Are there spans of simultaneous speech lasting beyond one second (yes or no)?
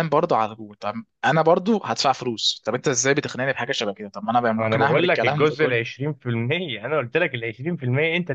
yes